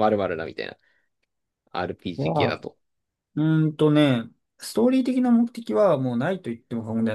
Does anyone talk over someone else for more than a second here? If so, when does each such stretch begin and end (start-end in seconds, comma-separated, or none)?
none